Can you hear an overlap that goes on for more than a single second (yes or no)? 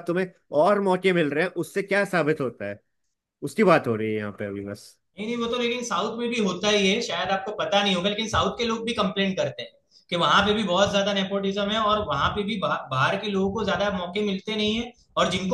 no